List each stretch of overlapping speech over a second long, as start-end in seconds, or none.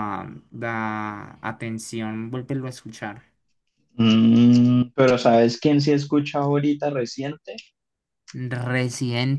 none